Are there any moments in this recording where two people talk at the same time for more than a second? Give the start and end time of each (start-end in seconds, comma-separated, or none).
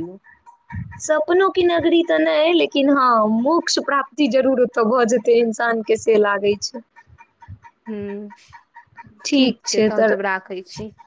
none